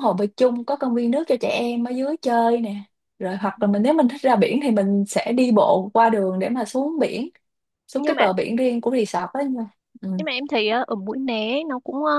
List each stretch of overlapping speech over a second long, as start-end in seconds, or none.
none